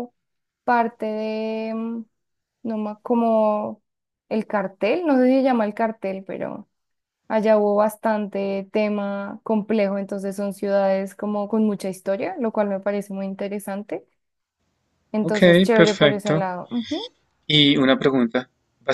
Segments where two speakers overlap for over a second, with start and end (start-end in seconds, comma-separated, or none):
15.2-16.4